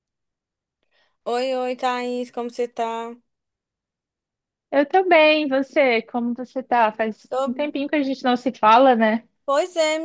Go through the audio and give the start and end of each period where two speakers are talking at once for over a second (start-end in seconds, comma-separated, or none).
none